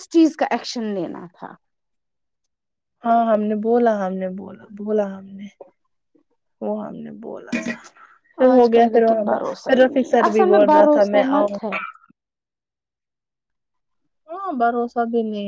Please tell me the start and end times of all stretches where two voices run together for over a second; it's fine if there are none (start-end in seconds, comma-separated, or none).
8.5-11.6